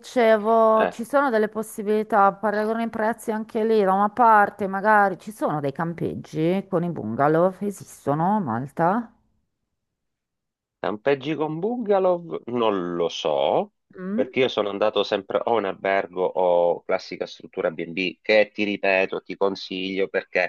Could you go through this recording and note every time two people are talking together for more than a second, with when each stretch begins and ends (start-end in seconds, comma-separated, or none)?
none